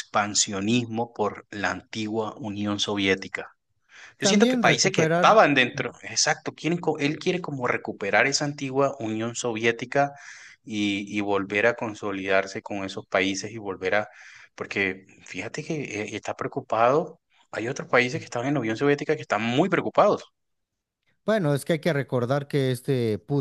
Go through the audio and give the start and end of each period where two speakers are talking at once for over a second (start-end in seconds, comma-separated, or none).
4.2-5.4